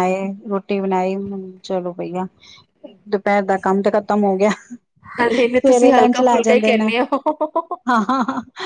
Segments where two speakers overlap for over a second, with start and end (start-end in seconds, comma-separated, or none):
5.4-6.9